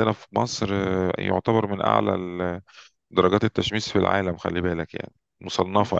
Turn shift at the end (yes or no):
yes